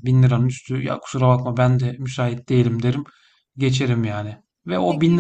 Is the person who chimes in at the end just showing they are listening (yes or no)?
yes